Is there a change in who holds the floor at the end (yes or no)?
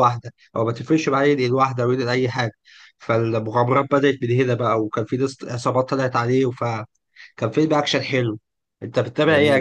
yes